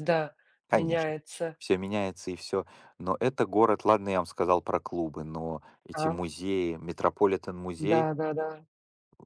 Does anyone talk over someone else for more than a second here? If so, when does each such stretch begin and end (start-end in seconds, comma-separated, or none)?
none